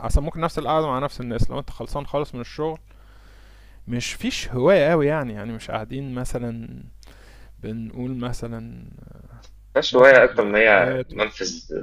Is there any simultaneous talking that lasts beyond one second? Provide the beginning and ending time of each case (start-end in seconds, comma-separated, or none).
9.9-11.3